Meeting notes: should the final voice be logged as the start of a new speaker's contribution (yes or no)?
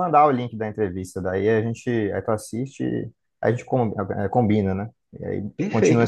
yes